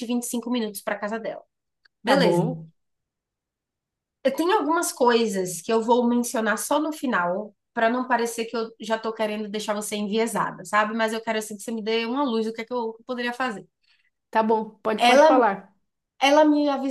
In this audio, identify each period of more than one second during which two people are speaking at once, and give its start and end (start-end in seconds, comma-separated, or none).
none